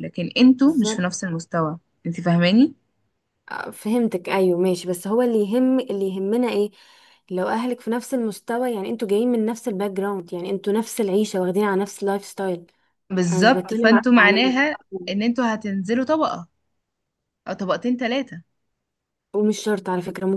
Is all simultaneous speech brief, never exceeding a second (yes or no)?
no